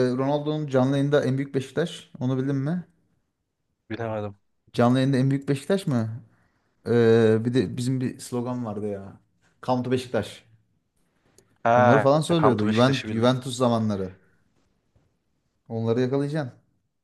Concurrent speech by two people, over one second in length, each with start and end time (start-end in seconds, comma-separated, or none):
11.8-13.3